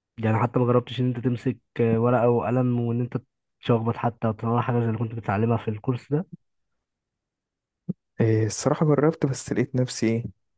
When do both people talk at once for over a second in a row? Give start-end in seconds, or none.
none